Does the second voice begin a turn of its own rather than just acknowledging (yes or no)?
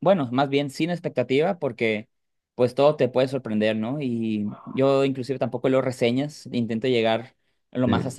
no